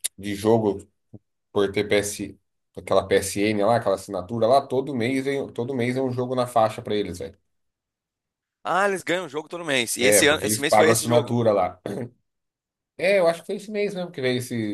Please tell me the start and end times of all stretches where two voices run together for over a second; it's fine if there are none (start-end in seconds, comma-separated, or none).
10.0-11.4